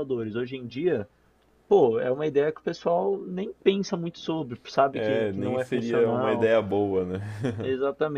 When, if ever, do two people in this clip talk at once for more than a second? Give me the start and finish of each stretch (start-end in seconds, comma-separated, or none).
4.9-6.5